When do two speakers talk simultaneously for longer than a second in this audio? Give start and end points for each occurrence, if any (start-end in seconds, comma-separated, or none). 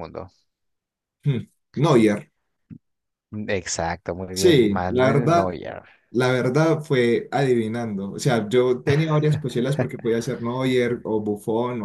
4.3-5.5